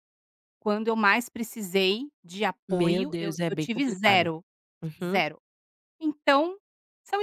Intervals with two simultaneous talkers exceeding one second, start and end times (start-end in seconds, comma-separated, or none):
2.7-4.3